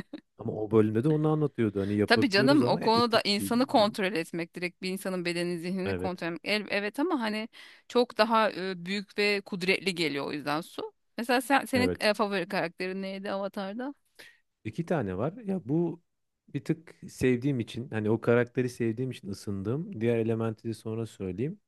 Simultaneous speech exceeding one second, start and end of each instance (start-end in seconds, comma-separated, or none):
2.1-3.9